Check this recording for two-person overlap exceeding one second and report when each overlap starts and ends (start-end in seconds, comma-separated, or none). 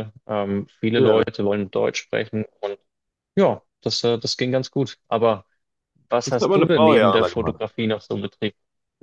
6.2-7.6